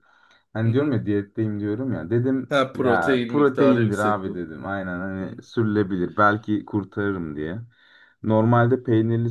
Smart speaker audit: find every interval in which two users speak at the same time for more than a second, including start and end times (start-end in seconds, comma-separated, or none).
2.5-4.4